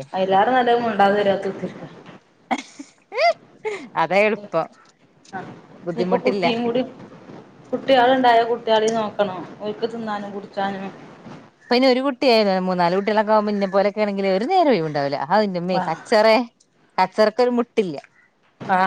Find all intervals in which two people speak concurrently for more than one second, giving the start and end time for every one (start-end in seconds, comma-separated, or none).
none